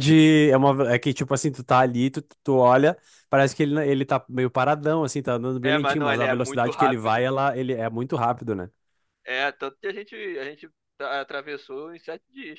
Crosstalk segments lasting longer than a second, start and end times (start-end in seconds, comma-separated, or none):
5.6-7.2